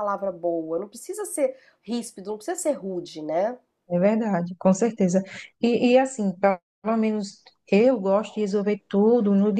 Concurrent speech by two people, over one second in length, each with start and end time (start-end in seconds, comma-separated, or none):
none